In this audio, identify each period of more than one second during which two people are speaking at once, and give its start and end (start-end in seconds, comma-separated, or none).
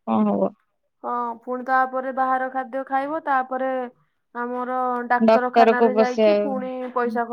5.3-6.6